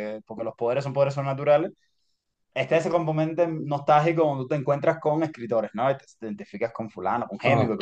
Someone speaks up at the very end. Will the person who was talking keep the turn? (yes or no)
yes